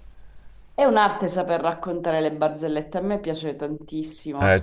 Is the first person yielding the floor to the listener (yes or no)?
yes